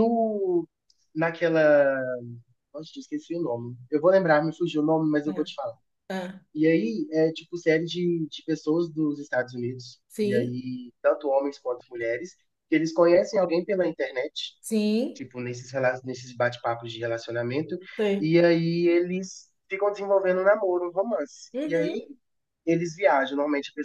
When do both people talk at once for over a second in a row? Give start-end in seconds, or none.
none